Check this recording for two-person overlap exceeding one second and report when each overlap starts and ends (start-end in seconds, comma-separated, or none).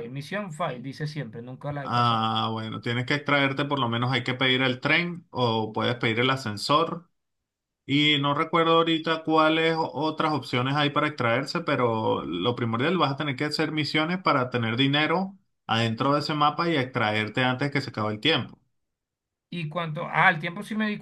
none